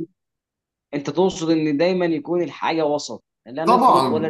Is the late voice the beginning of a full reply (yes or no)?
yes